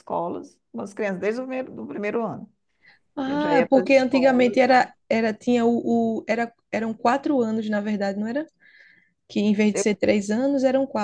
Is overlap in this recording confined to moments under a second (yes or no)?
no